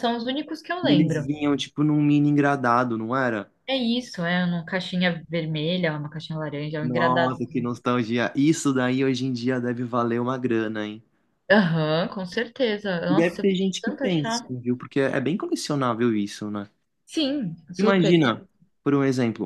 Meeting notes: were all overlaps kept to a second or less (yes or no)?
no